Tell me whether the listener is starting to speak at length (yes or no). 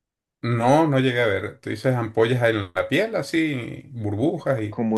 yes